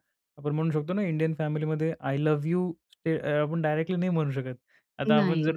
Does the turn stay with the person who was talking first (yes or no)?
yes